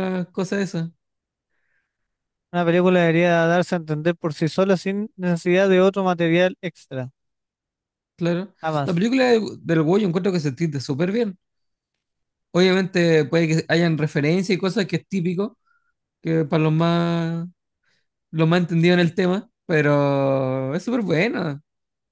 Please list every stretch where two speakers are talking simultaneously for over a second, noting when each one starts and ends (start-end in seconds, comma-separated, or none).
none